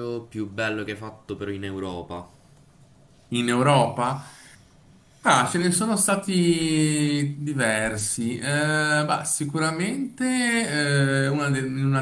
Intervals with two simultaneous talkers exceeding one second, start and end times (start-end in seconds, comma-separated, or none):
none